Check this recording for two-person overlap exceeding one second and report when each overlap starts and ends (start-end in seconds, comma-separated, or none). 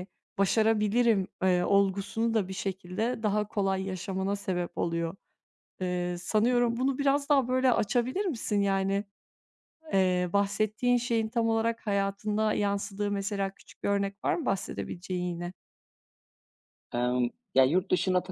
none